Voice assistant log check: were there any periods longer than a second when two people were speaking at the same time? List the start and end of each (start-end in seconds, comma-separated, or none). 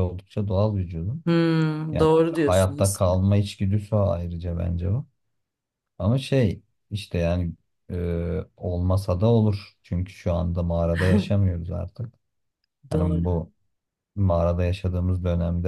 1.9-3.2